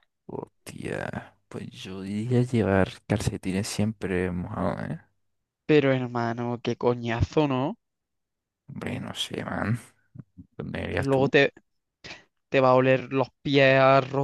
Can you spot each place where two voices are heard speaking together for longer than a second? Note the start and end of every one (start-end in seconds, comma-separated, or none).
none